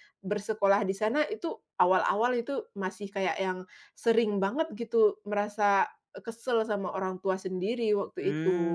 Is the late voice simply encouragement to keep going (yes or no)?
no